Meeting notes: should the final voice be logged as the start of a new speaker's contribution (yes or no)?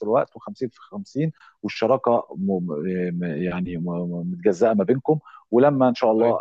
no